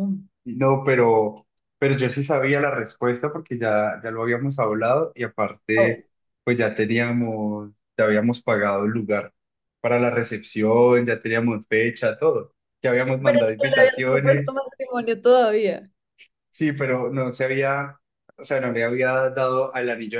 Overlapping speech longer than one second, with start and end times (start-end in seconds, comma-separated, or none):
13.2-14.6